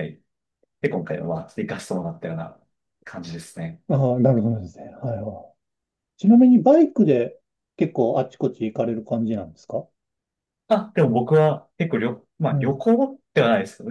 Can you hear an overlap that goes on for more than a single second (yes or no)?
no